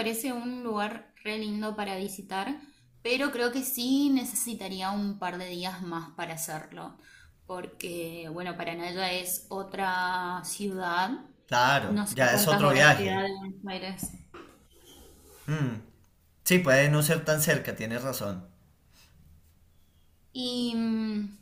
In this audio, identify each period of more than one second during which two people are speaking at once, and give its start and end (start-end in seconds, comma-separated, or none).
11.8-13.2